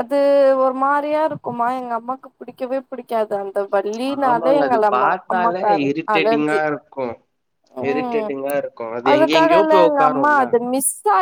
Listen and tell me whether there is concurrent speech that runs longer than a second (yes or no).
yes